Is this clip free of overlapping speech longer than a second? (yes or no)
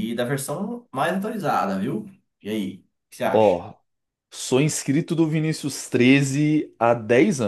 yes